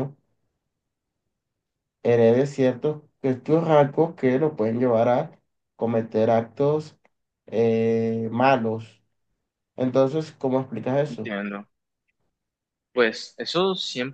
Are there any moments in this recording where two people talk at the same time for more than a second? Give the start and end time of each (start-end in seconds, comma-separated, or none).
none